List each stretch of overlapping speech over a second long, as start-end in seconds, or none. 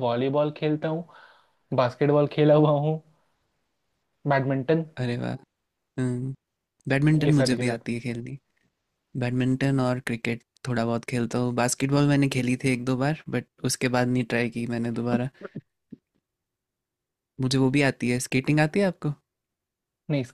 none